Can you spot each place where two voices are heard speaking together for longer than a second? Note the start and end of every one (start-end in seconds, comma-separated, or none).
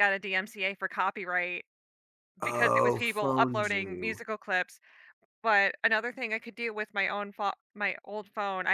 2.4-4.2